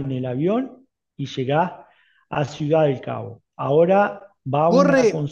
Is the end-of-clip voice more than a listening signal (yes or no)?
yes